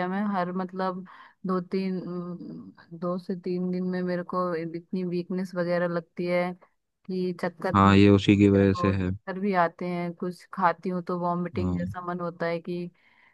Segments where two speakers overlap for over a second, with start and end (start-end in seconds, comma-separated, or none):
7.8-9.1